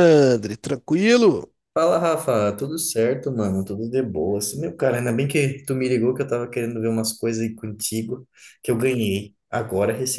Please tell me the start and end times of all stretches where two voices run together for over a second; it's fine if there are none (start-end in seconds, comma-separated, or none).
none